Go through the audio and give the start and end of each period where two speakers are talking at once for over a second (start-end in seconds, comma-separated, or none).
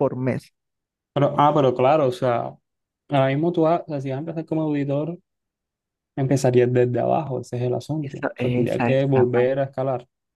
8.0-9.5